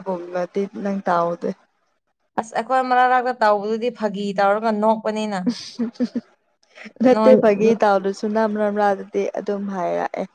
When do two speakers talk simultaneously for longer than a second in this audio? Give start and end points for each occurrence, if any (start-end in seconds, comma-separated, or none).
none